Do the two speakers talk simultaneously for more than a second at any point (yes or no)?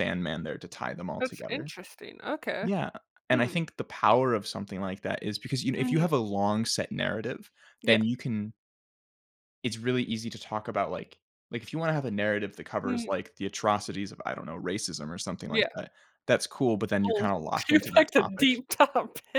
yes